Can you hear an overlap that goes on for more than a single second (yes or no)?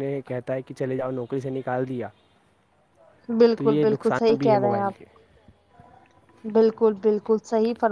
yes